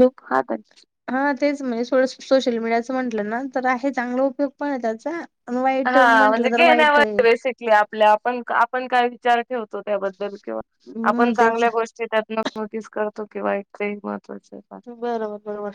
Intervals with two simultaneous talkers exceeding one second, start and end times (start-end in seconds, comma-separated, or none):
5.8-7.2